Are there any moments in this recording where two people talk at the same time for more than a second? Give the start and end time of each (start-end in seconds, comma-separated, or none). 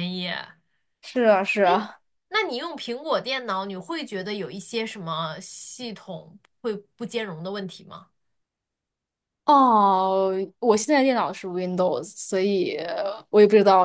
none